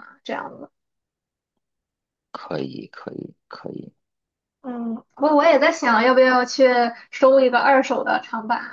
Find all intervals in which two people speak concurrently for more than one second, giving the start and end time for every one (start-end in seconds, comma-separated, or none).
none